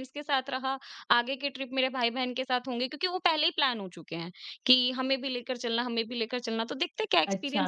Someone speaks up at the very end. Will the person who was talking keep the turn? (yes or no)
no